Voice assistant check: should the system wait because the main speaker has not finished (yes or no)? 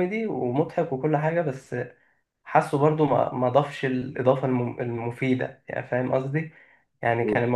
yes